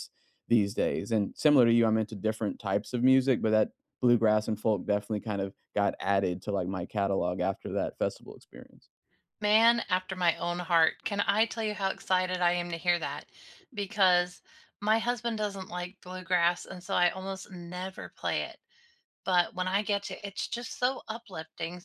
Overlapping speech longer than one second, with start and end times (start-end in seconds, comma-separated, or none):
none